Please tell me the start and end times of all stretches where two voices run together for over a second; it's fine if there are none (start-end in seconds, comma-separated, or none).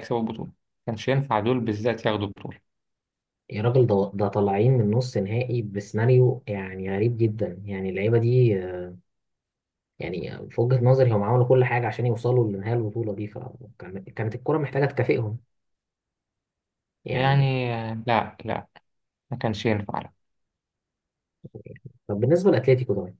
none